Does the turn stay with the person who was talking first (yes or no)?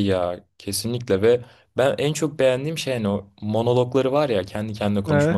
yes